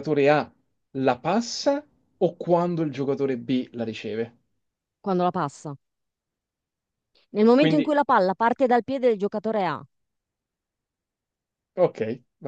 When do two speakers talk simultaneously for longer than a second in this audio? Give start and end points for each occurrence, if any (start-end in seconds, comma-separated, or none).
none